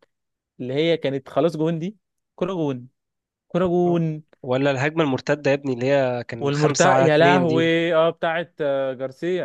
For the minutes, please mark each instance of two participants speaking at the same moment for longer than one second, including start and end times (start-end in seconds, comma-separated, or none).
6.4-7.8